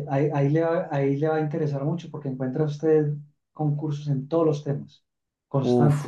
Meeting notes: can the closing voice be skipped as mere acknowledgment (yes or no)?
no